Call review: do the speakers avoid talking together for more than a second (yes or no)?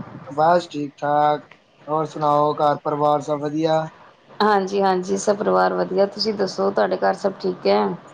yes